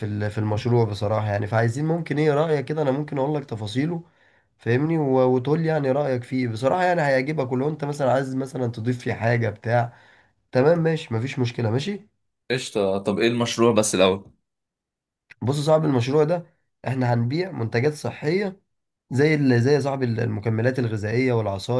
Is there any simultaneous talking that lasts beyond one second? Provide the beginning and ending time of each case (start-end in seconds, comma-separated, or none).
none